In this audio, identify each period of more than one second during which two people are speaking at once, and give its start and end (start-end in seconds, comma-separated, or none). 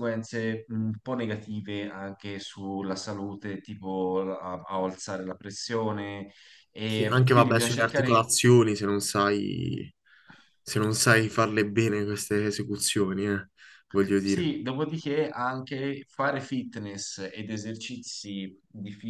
6.9-8.3